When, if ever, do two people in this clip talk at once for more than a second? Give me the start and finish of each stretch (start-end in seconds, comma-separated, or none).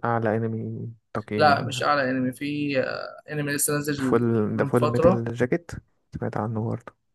4.0-5.2